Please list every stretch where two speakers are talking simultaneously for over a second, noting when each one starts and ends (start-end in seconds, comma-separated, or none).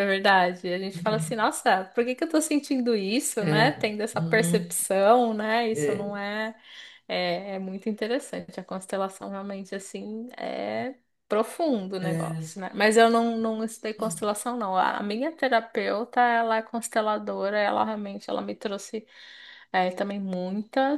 3.4-4.7